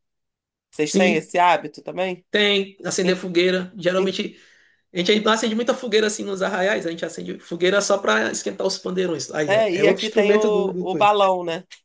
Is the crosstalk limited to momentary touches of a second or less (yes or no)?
no